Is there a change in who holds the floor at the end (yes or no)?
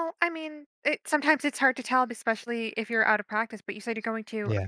no